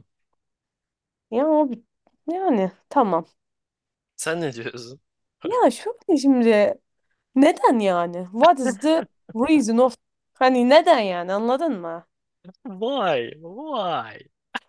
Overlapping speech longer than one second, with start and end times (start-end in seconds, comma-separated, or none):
none